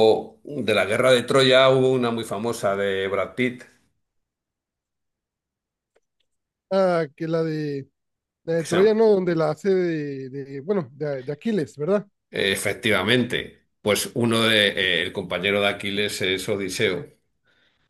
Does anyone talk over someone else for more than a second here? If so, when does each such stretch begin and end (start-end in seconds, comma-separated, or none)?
none